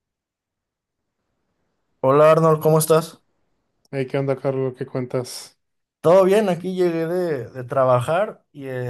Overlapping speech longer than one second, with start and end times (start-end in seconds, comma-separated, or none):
none